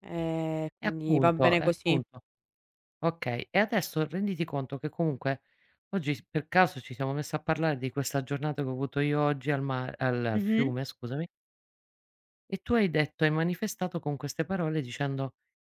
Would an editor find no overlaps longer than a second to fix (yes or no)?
no